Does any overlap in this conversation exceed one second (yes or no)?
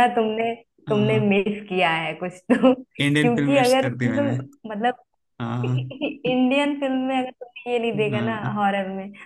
yes